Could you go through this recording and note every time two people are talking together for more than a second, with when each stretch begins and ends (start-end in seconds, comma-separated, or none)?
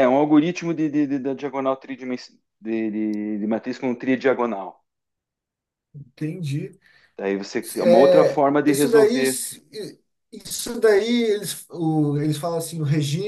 7.8-9.2